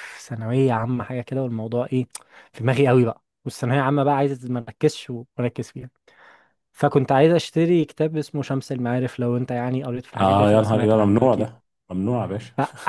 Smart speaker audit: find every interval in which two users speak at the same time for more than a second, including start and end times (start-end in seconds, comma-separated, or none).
10.2-11.5